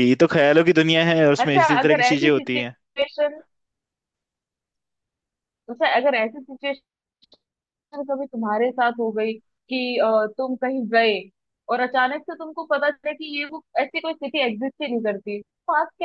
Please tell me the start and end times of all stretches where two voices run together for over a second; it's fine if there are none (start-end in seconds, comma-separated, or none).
1.4-2.7